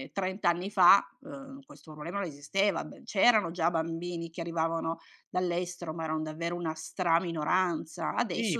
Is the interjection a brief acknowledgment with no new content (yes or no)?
no